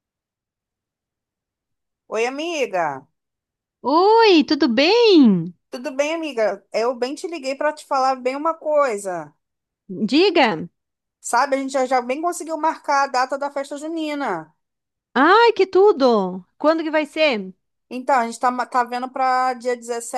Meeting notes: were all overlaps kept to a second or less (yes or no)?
yes